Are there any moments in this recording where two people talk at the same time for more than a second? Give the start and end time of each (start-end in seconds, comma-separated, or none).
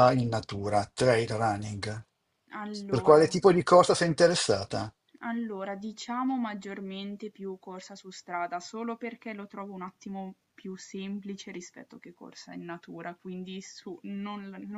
none